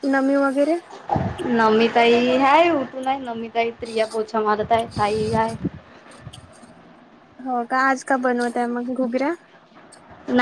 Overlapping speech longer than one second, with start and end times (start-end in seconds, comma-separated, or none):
none